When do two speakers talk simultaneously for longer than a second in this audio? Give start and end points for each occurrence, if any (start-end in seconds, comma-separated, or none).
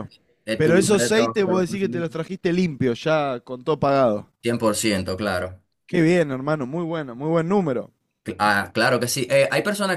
0.6-2.1